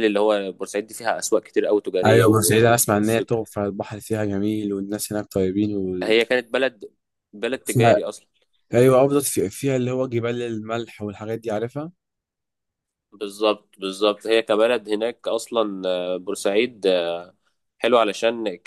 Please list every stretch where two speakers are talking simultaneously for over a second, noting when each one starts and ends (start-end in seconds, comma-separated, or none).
2.0-3.3